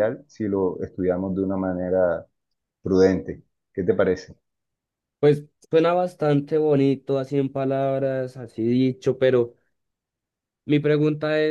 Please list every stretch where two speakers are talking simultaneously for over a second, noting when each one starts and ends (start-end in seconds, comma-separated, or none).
none